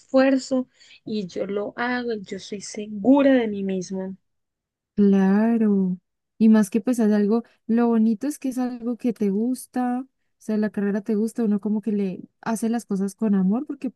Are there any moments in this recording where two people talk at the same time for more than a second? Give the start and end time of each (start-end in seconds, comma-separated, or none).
none